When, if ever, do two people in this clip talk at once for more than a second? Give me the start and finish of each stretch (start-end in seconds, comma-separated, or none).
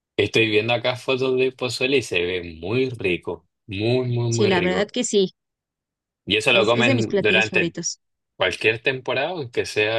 6.5-7.7